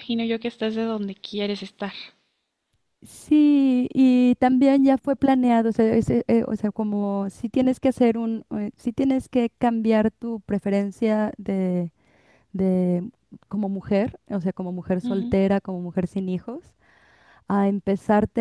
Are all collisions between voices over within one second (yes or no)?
yes